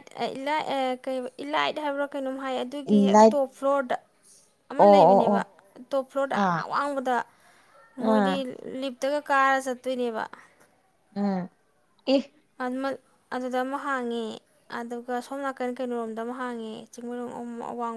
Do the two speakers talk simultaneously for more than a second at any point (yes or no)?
no